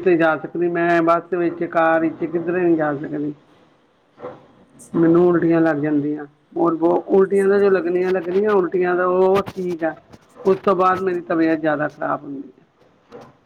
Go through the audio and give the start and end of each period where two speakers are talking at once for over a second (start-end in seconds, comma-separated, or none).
7.2-9.1